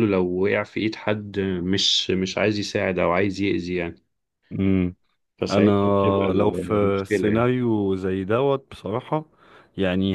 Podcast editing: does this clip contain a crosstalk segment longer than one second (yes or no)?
yes